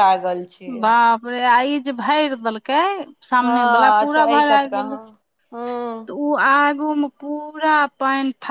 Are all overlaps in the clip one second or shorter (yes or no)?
no